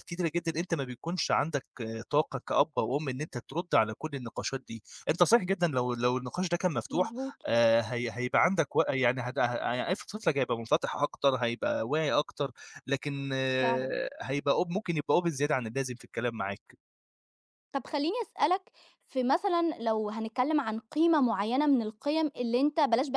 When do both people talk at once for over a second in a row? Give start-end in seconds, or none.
none